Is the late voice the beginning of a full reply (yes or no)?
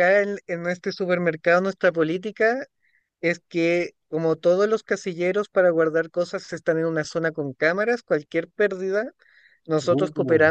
no